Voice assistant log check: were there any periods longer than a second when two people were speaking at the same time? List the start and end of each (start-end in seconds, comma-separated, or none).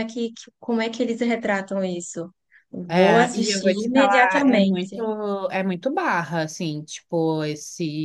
2.9-5.0